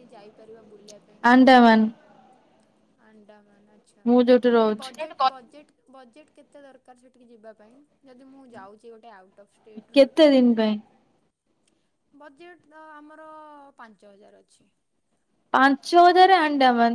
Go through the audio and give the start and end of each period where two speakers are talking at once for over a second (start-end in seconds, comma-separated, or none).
none